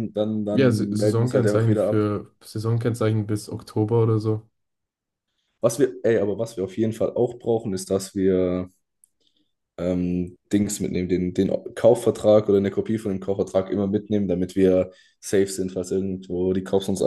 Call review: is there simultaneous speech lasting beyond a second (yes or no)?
yes